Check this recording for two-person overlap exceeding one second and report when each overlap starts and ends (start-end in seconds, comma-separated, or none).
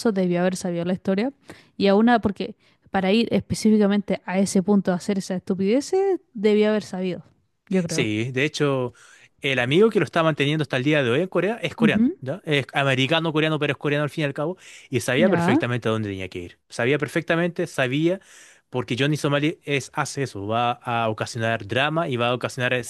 none